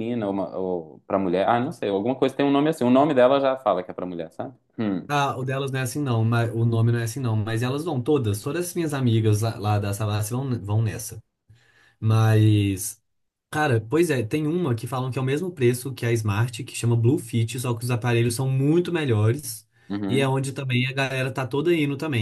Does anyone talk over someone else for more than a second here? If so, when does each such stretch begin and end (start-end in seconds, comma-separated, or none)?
none